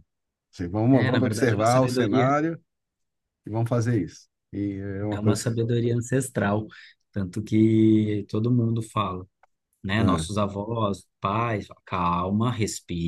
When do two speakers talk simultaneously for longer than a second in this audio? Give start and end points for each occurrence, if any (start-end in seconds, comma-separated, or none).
0.9-2.3